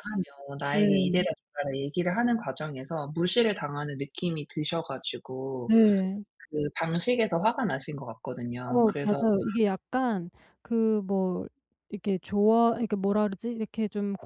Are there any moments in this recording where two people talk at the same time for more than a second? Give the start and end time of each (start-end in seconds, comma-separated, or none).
none